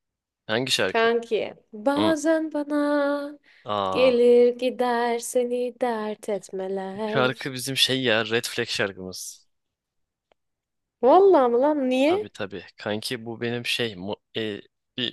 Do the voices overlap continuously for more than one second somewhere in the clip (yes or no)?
no